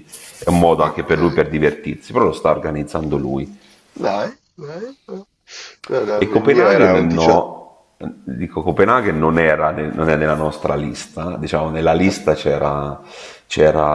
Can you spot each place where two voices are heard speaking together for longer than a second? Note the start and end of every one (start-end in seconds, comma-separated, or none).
6.1-7.5